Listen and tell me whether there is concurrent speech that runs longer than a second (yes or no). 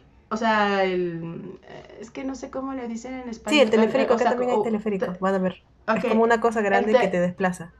yes